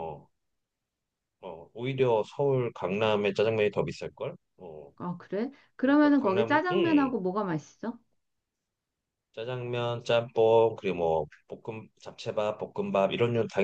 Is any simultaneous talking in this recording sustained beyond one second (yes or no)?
yes